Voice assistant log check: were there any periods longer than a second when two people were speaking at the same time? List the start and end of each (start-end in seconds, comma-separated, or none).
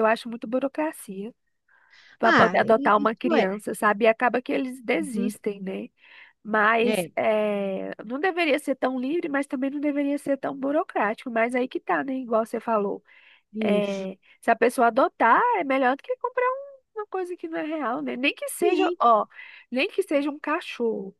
2.2-3.5